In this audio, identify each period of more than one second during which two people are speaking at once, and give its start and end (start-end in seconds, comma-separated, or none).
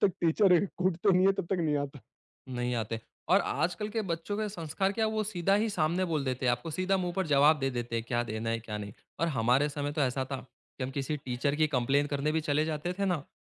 none